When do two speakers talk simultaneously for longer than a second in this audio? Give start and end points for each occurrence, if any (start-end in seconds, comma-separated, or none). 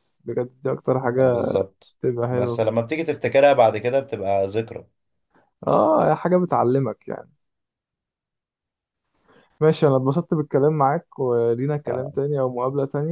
none